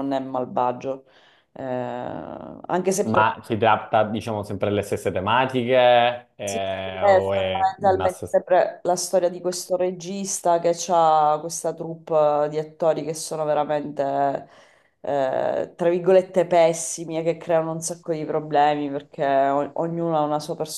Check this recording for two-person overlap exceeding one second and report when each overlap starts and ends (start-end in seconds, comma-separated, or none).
6.4-8.1